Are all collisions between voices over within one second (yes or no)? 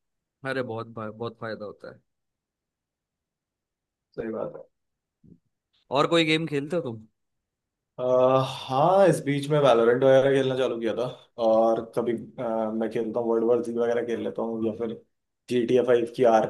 yes